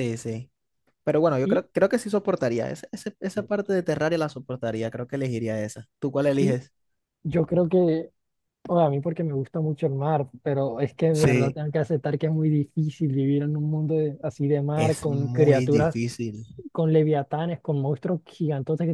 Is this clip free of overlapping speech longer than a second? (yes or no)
no